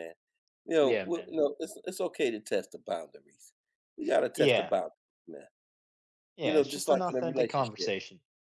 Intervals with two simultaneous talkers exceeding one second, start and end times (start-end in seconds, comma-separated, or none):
6.4-7.9